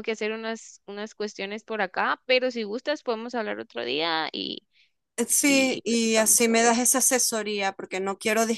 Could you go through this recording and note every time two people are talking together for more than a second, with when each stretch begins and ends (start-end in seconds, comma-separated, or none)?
5.4-6.9